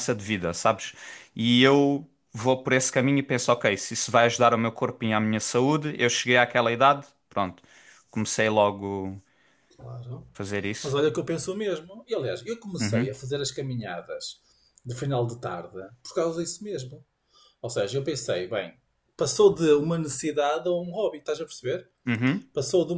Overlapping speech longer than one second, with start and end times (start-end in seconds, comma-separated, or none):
none